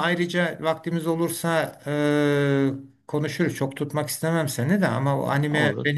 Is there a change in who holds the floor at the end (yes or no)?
no